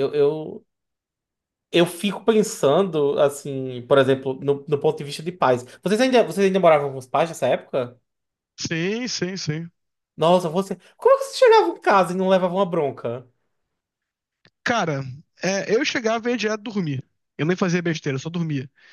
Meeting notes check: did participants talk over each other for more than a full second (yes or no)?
no